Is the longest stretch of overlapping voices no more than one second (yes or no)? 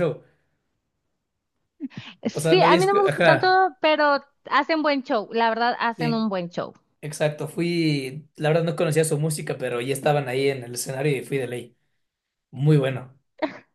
no